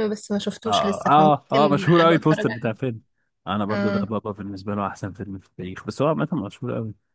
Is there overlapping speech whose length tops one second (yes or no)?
yes